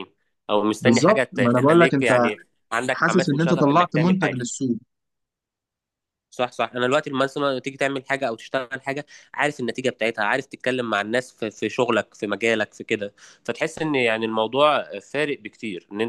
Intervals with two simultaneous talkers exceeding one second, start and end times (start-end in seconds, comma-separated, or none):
0.8-2.1, 2.9-4.4